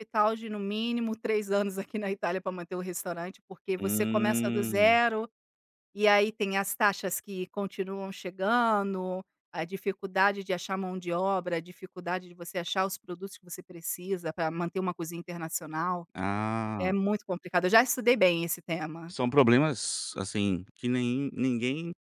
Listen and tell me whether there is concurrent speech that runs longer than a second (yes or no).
yes